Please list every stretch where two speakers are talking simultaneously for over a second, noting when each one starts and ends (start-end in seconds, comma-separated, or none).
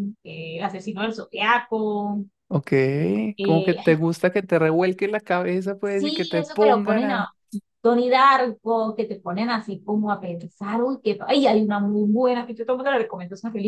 5.8-7.3